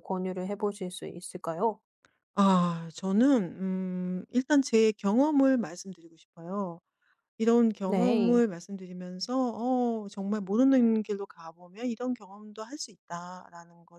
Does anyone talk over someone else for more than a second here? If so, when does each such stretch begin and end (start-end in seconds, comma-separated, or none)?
none